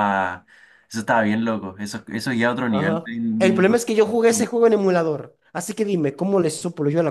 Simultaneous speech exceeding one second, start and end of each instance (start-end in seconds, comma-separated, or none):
2.7-4.1